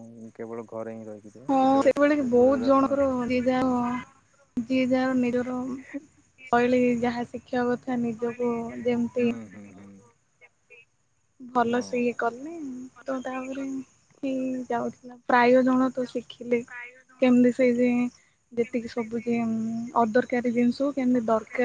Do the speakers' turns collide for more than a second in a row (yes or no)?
yes